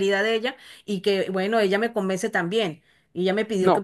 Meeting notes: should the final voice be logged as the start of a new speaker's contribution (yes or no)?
no